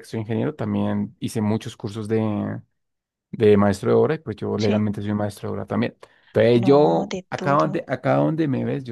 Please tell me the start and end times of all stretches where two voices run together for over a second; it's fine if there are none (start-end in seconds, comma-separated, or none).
6.5-7.9